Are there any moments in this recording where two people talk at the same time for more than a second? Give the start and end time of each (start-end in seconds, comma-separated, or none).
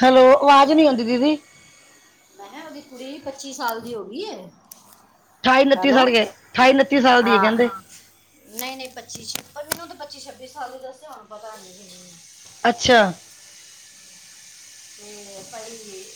none